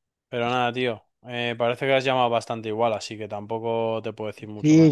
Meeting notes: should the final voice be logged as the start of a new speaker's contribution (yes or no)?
yes